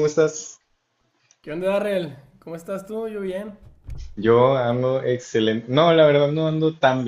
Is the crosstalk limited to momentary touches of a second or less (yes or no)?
yes